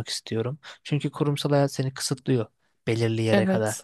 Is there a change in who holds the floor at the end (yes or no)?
no